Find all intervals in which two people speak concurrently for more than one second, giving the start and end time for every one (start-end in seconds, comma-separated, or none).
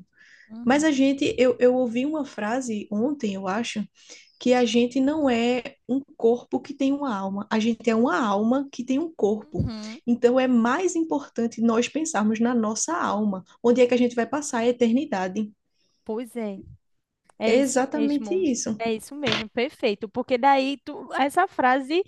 17.4-18.8